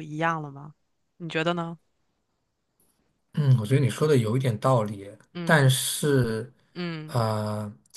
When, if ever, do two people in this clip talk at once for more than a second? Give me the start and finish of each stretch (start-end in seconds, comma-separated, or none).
none